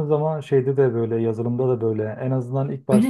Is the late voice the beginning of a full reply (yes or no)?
no